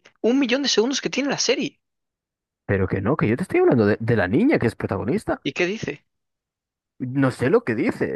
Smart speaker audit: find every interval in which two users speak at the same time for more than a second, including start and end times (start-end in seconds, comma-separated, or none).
none